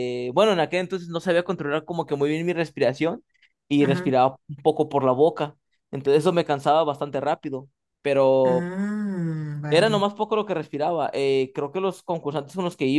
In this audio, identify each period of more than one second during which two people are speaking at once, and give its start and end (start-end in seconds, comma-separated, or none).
none